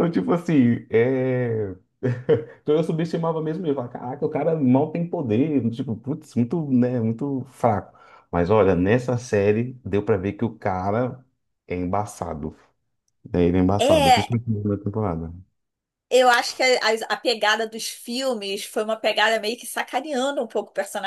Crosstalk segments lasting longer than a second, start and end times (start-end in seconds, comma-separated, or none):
none